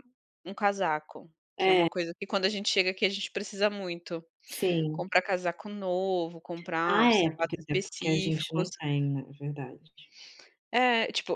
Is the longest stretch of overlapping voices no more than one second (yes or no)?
no